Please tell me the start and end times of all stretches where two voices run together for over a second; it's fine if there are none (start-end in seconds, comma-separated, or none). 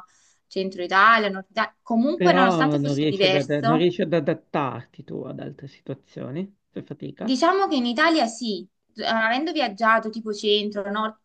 2.1-3.9